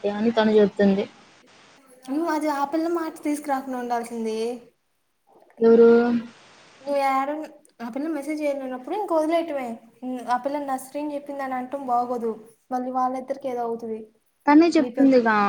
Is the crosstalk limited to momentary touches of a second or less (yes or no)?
yes